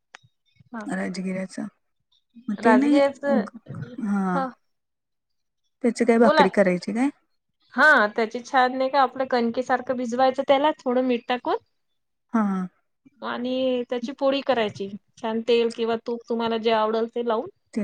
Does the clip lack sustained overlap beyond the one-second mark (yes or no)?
yes